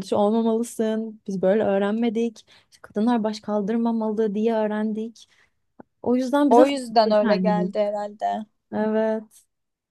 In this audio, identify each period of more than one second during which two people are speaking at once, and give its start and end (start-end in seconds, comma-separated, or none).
6.5-7.7